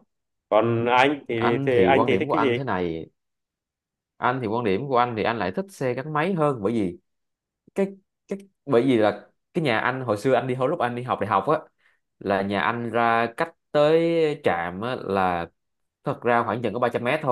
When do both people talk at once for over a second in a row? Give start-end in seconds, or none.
1.4-2.6